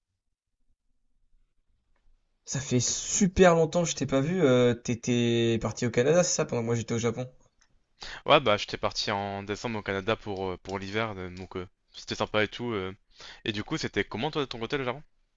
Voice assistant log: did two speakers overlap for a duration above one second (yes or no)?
no